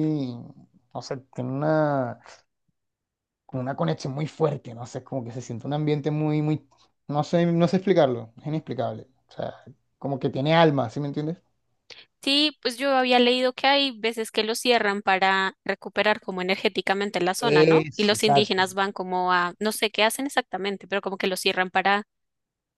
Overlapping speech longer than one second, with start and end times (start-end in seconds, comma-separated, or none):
17.4-18.7